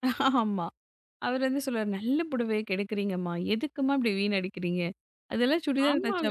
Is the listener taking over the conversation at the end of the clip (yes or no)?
yes